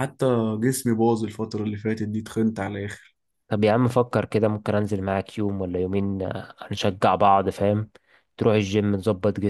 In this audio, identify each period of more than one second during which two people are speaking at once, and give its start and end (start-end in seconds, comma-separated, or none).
none